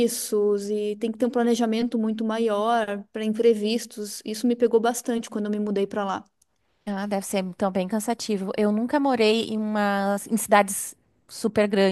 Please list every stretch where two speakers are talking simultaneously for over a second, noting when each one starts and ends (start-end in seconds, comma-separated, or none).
none